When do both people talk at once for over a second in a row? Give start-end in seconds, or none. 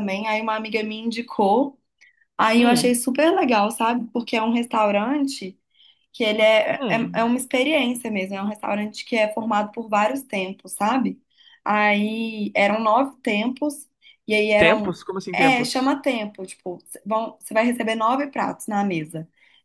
14.6-15.9